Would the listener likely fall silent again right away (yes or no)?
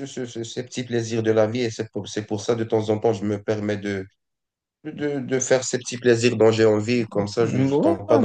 yes